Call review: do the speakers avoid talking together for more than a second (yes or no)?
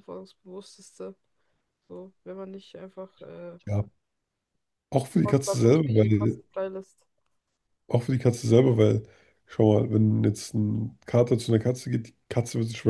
no